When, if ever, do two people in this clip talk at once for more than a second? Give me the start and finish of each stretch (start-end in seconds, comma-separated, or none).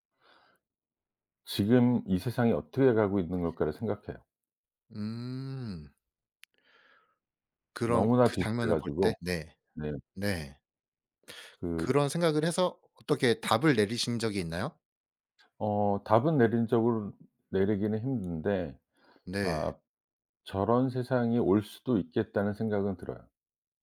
7.8-9.2